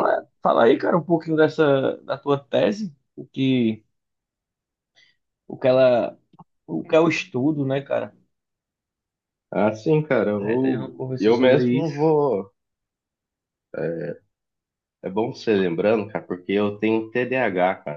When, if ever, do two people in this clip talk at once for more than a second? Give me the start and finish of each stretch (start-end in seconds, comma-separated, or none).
10.4-11.9